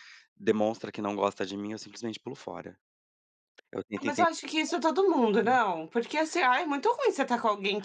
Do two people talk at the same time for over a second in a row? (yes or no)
no